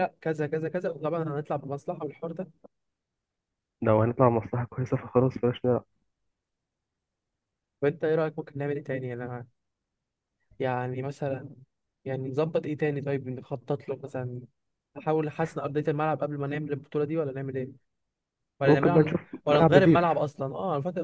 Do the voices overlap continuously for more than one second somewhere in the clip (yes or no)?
yes